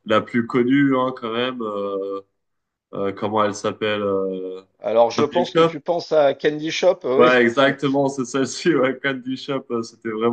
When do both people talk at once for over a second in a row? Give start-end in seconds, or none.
none